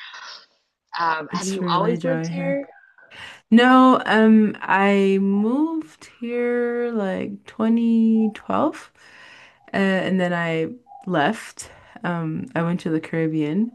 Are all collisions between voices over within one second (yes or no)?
no